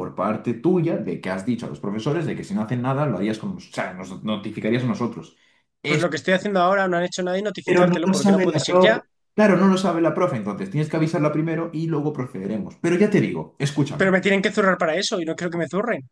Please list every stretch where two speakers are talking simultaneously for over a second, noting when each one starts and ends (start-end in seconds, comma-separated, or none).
7.7-9.0